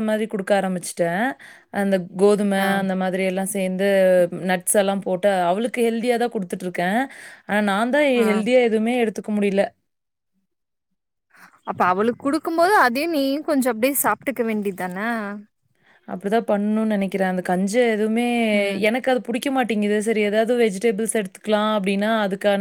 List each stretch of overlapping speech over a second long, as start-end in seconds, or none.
none